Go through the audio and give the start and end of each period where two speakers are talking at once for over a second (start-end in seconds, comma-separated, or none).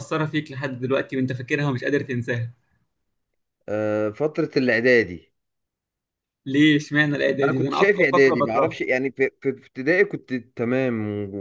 7.4-8.8